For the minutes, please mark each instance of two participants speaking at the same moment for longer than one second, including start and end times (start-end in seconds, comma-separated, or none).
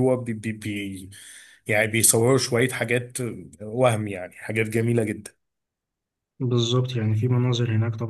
none